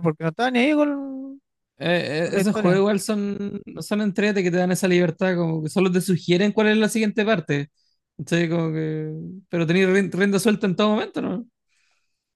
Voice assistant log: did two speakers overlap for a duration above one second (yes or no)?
no